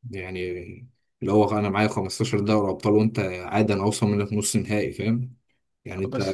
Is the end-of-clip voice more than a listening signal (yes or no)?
no